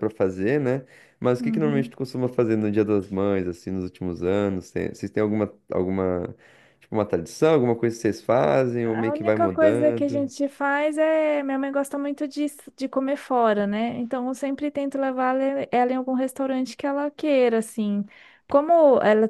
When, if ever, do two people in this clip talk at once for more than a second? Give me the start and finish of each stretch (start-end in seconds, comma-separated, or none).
8.8-10.3